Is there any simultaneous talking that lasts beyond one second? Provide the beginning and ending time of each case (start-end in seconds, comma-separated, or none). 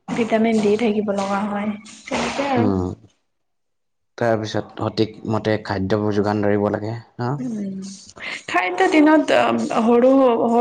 none